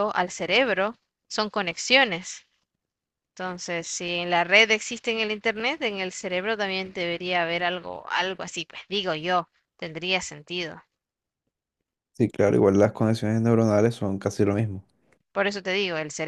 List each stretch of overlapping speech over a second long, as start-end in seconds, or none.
none